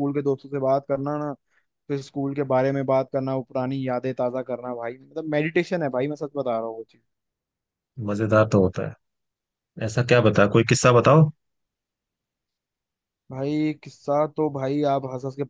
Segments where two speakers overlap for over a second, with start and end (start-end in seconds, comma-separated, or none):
none